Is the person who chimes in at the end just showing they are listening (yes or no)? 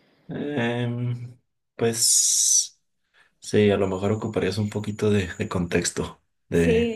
no